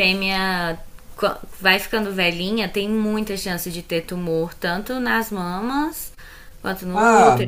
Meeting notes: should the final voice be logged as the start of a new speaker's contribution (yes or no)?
yes